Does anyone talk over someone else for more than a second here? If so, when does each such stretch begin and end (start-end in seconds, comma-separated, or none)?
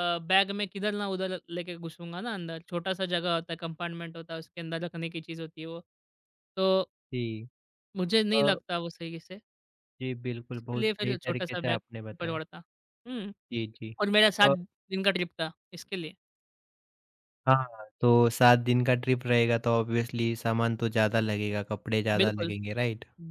10.5-12.4